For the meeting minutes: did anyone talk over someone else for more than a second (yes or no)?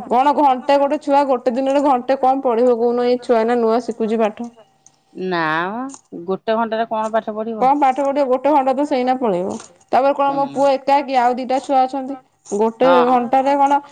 no